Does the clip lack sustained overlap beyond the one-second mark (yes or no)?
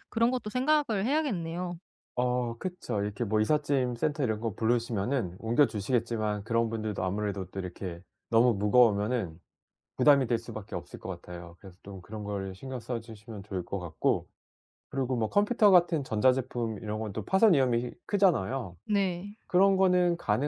yes